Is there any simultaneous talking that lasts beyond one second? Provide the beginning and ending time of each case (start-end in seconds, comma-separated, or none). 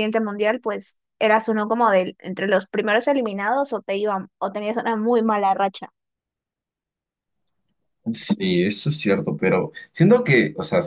none